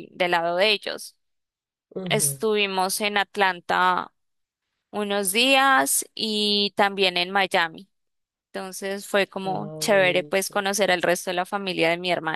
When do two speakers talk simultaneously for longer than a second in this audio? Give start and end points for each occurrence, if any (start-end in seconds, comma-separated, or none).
9.4-10.7